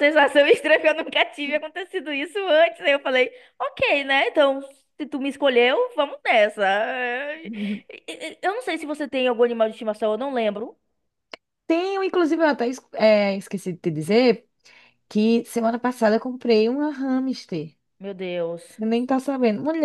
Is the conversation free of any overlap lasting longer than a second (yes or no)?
yes